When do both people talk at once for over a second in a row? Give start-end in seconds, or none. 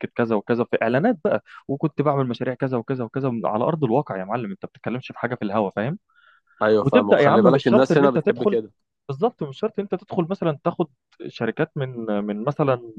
6.8-8.6